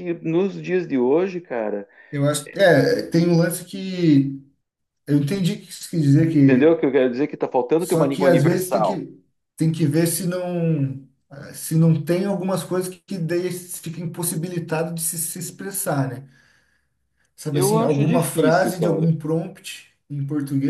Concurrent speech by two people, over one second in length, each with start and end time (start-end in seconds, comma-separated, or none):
7.8-9.0, 17.5-19.1